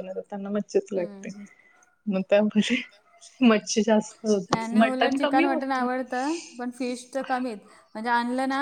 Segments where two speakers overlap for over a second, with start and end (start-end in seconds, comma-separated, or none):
4.5-5.9